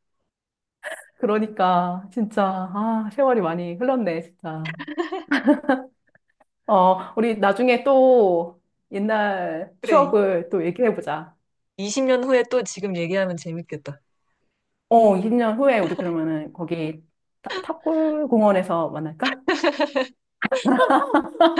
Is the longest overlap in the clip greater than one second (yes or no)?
no